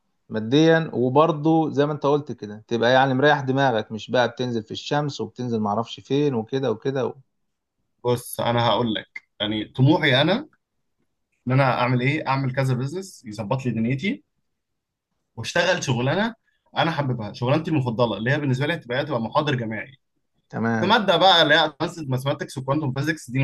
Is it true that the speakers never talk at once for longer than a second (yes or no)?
yes